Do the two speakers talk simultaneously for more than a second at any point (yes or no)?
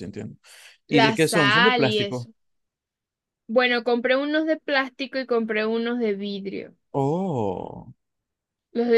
yes